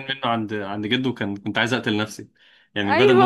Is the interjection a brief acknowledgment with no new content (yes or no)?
no